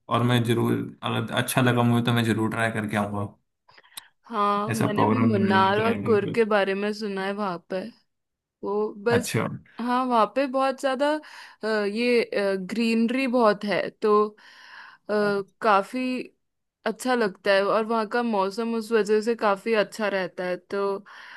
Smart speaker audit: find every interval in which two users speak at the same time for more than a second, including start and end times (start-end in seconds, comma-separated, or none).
4.7-6.2